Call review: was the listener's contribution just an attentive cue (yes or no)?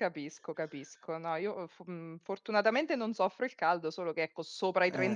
yes